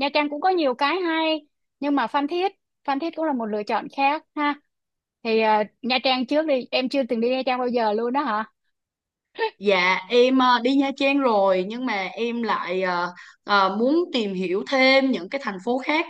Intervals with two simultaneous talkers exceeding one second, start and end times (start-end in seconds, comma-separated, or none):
none